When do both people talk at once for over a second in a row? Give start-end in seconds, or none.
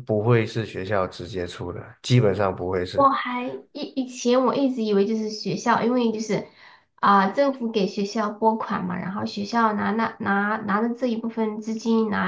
none